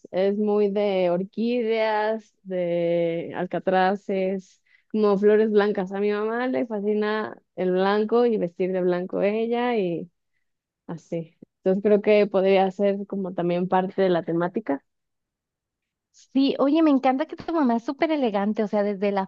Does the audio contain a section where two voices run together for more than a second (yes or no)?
no